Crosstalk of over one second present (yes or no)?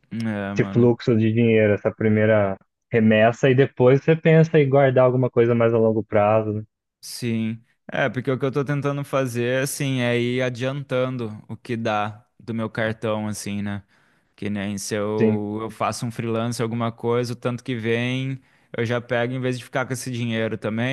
no